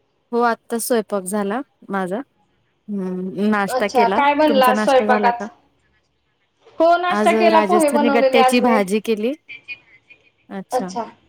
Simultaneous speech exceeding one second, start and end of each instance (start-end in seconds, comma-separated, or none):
3.8-5.5, 7.2-8.8